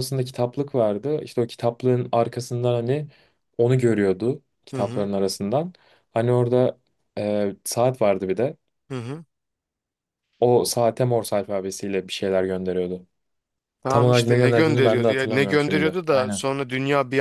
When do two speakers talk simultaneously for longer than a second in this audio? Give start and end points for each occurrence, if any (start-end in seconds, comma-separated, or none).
13.9-16.4